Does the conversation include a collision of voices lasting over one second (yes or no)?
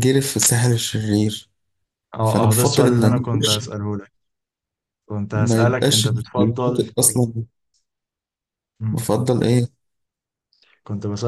yes